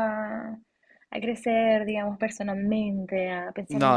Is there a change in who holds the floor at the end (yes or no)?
no